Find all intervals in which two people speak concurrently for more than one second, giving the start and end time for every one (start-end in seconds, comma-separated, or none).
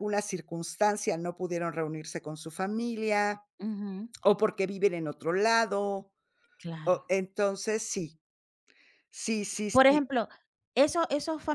none